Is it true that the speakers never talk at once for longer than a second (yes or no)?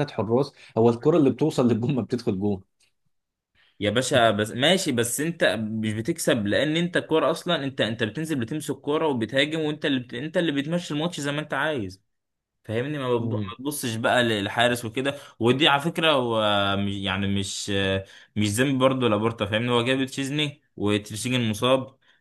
yes